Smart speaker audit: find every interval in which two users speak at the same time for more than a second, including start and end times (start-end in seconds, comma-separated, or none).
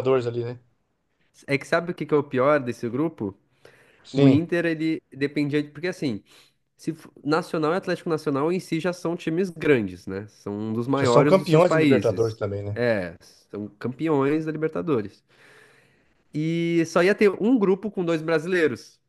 11.0-12.8